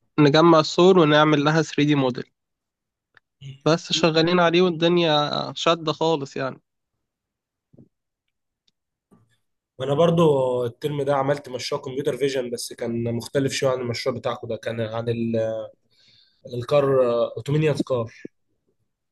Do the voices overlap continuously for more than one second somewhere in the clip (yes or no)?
no